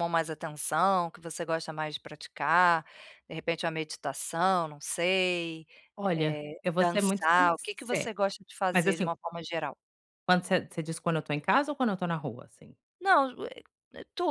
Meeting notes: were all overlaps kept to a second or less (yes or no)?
no